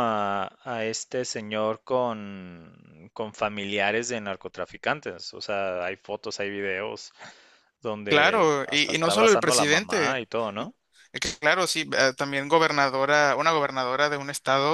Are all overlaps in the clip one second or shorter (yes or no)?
no